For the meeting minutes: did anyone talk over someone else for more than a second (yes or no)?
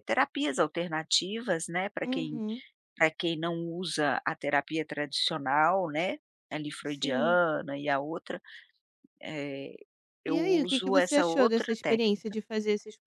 yes